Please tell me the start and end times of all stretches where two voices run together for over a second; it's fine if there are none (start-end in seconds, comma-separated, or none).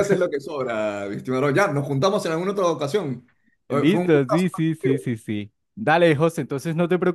3.7-5.1